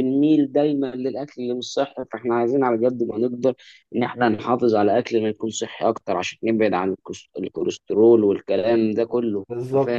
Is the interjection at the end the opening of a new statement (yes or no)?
yes